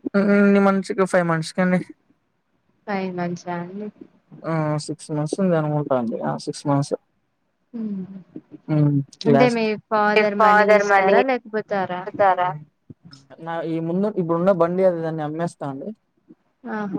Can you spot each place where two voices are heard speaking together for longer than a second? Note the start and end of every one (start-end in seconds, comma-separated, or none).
10.8-12.0